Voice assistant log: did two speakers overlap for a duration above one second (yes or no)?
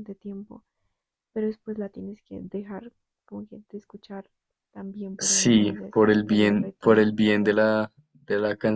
yes